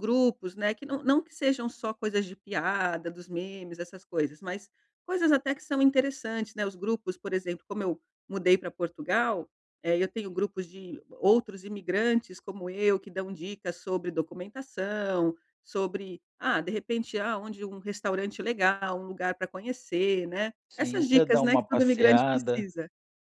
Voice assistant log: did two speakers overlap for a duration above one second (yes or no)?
yes